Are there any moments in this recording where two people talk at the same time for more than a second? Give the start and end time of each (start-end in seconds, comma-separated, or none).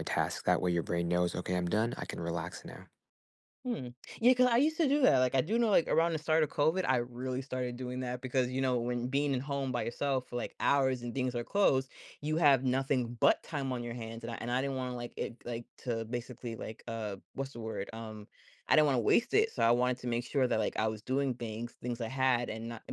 none